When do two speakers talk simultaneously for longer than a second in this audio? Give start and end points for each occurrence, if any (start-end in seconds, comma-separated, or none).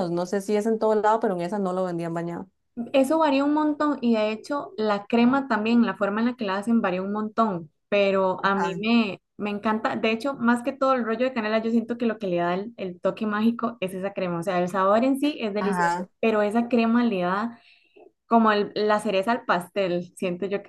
none